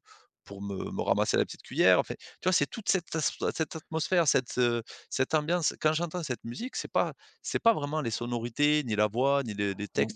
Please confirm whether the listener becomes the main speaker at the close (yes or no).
yes